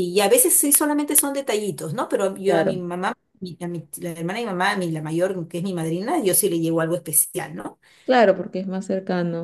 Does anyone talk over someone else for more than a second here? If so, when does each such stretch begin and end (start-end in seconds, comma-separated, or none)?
none